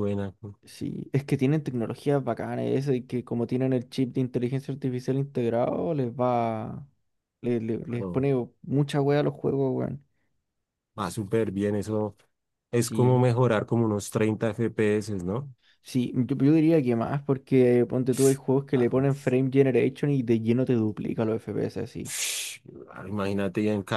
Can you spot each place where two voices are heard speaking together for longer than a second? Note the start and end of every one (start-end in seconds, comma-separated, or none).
none